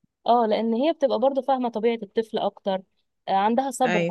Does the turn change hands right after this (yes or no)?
no